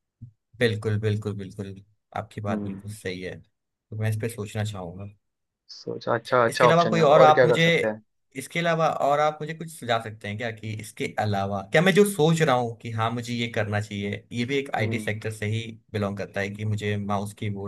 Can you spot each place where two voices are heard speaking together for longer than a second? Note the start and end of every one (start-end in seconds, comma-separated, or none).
6.5-7.7